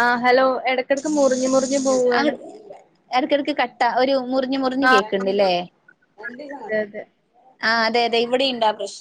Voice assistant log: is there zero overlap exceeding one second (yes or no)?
yes